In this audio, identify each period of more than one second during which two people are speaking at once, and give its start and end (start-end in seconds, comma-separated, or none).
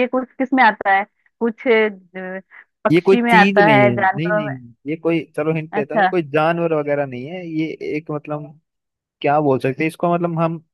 2.9-4.5